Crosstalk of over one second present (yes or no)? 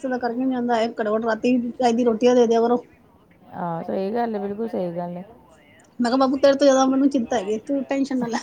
no